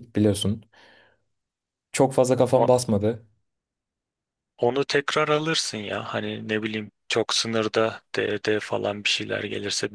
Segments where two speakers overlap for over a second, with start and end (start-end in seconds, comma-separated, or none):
none